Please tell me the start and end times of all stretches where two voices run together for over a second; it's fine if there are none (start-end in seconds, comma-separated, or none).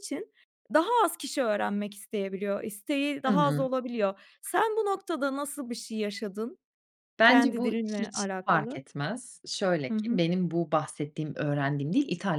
7.2-8.8